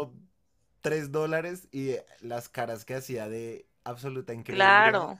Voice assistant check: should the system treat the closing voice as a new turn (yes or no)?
yes